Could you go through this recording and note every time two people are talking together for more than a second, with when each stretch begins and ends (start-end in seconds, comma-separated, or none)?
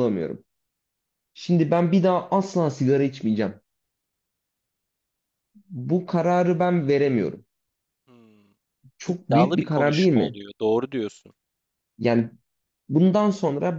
9.1-10.4